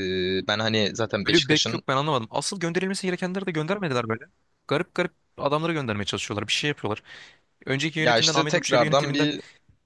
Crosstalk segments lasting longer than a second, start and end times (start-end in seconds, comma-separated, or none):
8.0-9.3